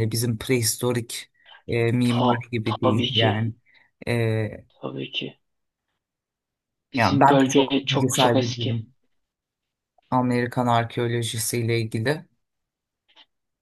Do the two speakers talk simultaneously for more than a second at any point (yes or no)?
yes